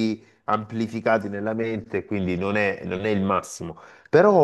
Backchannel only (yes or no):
yes